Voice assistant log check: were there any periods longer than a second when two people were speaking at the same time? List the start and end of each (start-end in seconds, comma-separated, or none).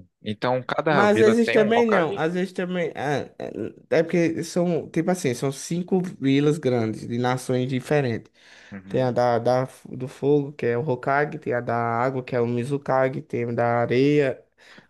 0.9-2.3